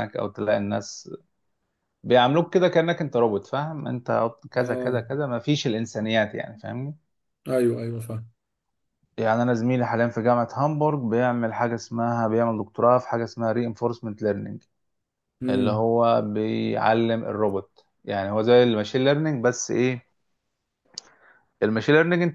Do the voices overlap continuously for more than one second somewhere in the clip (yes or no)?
no